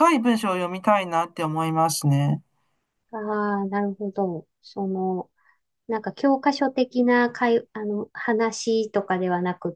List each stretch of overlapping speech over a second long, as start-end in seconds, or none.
none